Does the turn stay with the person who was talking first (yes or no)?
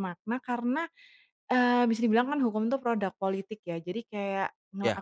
yes